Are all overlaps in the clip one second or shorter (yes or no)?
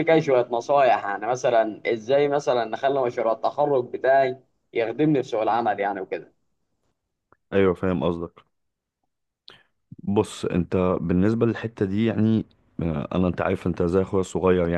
yes